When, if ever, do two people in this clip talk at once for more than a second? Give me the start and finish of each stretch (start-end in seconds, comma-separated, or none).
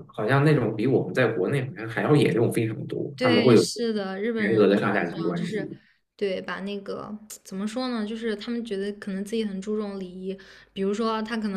4.4-5.7